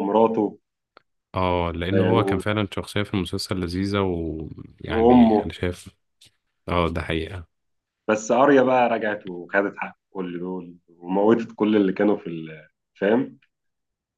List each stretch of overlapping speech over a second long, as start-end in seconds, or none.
none